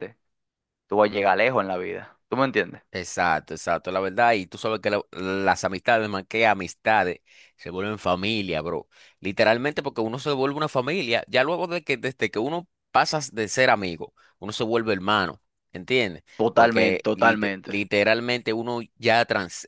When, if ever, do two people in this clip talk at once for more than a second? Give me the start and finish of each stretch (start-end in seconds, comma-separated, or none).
16.4-17.8